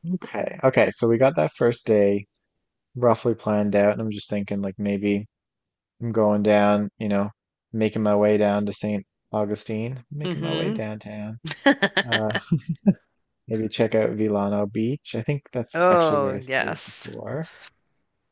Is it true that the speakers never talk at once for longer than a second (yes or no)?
no